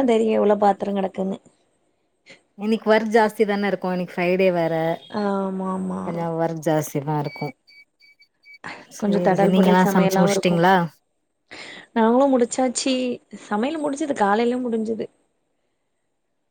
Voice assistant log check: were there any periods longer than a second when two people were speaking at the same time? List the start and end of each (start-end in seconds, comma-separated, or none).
9.0-10.6